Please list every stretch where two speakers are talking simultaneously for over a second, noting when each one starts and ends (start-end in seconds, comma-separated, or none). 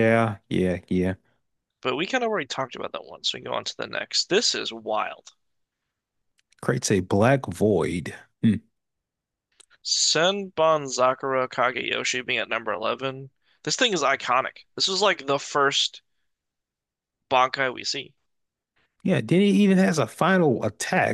none